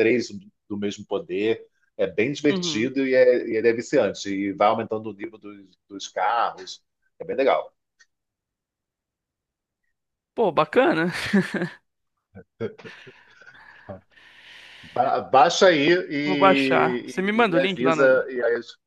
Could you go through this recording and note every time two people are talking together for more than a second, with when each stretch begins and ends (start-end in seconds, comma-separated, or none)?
16.2-18.1